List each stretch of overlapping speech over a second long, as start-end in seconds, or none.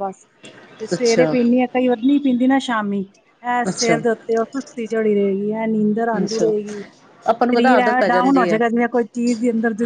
7.4-8.6